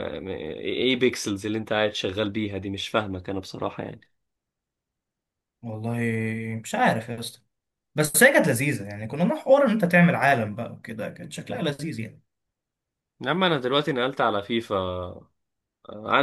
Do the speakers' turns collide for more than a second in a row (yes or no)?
no